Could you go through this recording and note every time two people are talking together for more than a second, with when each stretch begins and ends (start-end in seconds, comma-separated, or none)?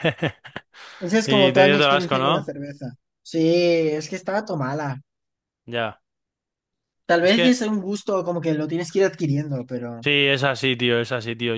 1.2-2.5